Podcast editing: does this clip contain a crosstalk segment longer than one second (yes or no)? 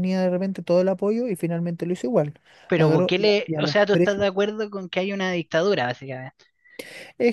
yes